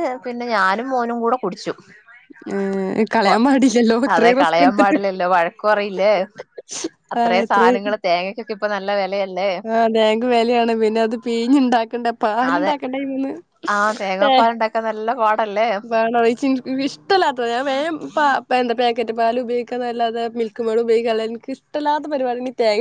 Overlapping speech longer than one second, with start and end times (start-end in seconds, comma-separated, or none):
none